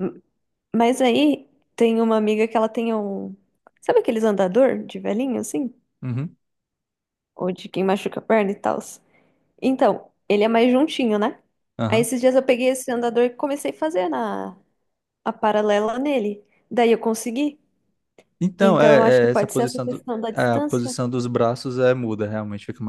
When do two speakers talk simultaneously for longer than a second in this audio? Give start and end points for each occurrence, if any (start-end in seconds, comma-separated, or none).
18.6-20.9